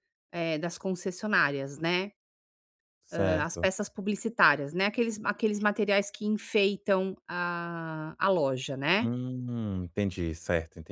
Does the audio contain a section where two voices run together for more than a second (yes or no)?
no